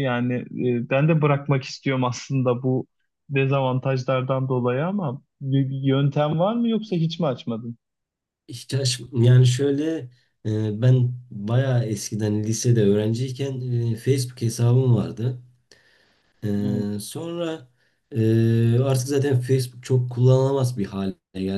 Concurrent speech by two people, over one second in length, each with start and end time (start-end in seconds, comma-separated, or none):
none